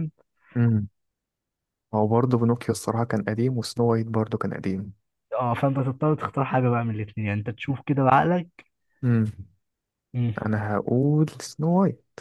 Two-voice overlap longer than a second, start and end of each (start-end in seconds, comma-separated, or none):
none